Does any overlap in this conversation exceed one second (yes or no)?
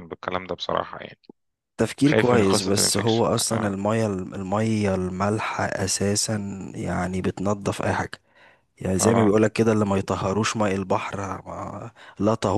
yes